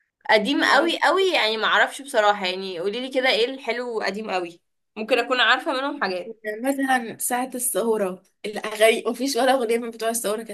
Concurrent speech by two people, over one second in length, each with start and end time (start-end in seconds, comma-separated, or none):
none